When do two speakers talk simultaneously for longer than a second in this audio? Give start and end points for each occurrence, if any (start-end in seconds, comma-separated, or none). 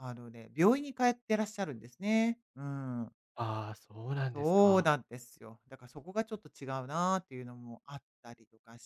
none